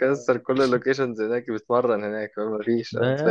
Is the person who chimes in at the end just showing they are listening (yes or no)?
no